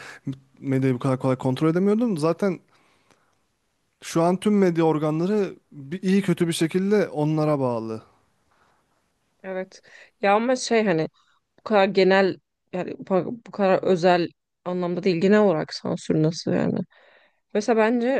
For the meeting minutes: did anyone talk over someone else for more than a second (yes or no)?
no